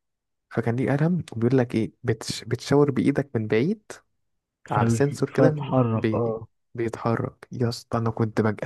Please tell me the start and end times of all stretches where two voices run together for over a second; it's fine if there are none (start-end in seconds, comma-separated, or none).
4.7-6.4